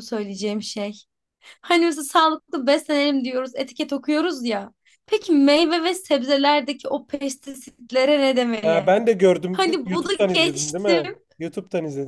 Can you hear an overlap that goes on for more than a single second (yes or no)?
yes